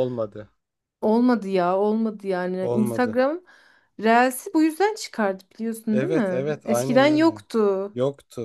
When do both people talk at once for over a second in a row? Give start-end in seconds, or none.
5.9-7.4